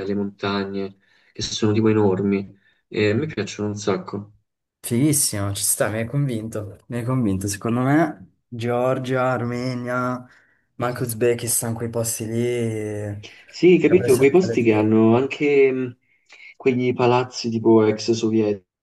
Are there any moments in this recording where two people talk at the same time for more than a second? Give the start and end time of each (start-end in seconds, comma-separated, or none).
none